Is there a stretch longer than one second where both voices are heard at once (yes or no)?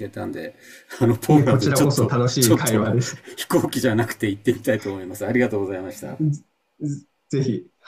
yes